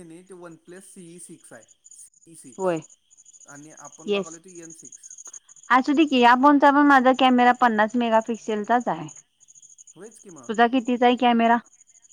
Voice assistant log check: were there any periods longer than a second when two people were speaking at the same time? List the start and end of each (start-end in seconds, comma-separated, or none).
none